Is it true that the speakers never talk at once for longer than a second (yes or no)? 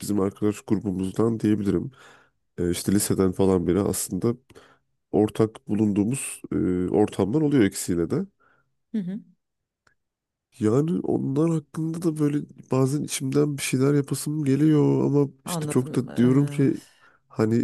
no